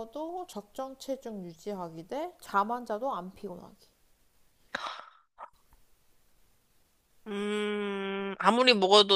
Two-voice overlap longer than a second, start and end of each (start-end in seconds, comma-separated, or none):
none